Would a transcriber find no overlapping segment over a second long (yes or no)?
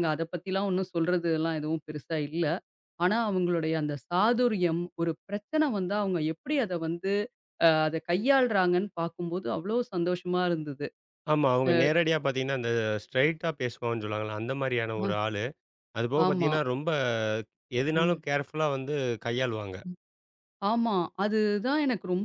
yes